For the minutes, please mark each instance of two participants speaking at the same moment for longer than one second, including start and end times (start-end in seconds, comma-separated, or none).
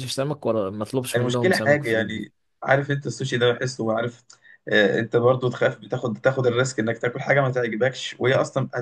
1.1-2.4